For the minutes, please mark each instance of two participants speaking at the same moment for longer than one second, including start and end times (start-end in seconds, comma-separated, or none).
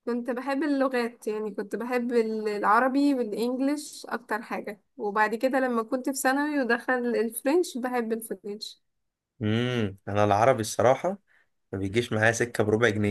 none